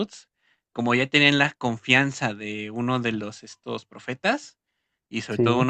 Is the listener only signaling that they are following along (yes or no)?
yes